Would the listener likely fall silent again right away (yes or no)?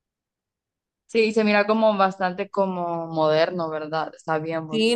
no